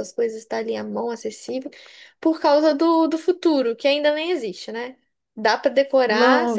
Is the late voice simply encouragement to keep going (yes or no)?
no